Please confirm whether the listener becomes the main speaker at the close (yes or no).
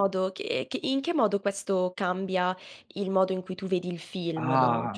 yes